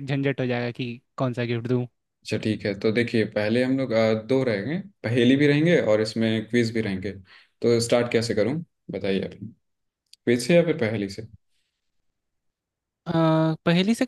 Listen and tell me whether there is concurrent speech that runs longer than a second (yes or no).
no